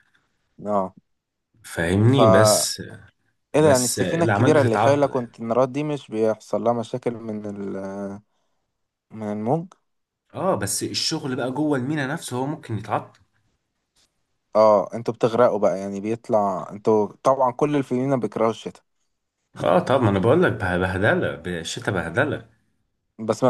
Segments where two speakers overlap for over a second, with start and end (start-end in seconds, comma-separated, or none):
3.5-5.4